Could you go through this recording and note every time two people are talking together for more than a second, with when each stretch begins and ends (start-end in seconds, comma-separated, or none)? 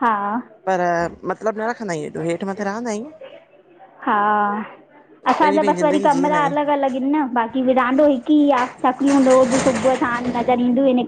5.3-6.7